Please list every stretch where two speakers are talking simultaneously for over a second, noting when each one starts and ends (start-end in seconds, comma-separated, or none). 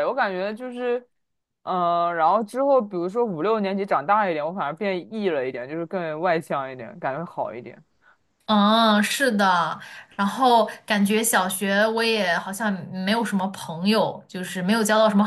none